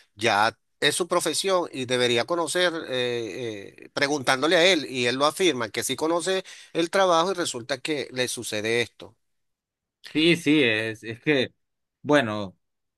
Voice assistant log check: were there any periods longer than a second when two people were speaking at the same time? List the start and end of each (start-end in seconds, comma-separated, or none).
none